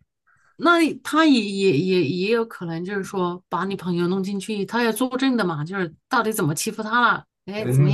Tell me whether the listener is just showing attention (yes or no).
no